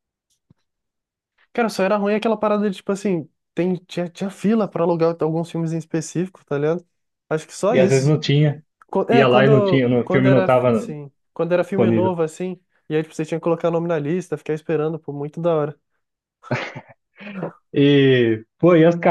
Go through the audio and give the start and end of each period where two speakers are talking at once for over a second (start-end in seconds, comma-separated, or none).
9.1-10.9